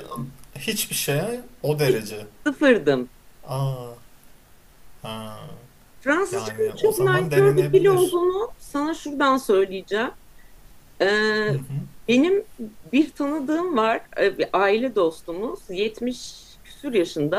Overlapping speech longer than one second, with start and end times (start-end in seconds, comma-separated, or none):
6.3-8.2